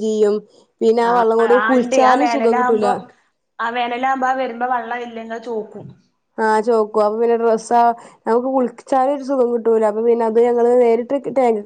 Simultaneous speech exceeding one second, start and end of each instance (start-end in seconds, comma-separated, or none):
none